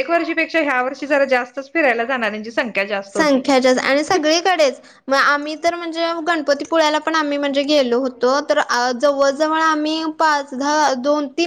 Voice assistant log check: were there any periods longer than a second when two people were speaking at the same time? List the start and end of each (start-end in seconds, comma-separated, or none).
none